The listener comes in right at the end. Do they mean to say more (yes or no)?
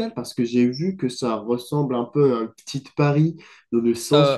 no